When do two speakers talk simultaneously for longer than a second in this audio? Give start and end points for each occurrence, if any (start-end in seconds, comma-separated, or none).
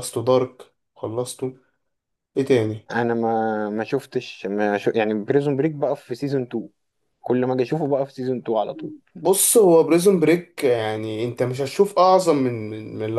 none